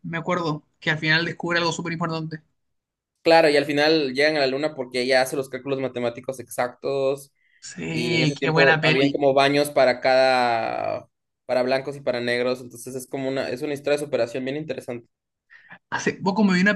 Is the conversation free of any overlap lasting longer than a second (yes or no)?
no